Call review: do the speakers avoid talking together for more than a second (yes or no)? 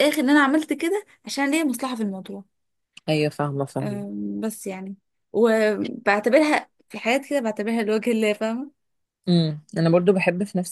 yes